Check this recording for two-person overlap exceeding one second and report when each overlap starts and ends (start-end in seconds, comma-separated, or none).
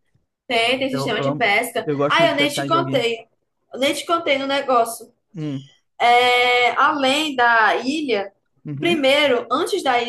0.9-3.1